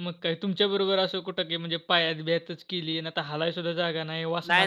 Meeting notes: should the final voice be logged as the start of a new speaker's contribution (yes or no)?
yes